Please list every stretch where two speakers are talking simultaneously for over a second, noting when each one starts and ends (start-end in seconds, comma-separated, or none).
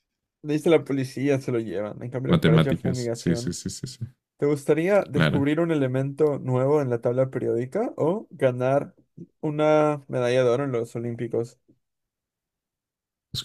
2.3-3.6